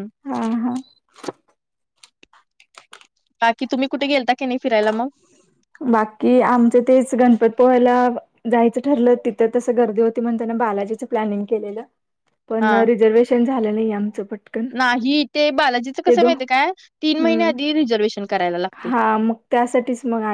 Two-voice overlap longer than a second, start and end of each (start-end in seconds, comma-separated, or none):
none